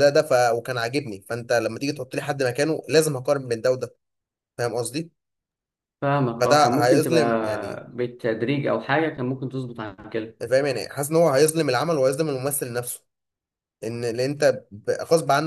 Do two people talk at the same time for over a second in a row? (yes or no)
yes